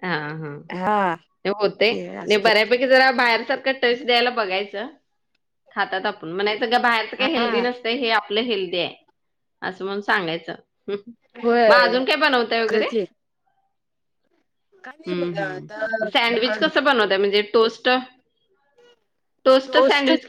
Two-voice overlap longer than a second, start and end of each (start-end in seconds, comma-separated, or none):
15.1-16.6